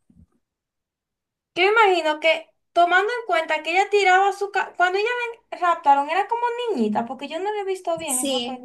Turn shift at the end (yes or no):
yes